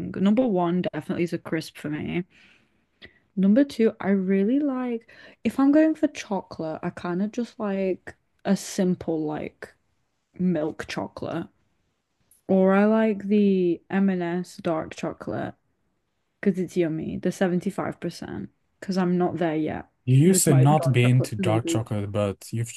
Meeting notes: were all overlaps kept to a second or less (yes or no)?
no